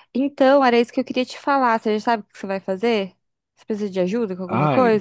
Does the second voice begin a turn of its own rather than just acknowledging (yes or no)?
yes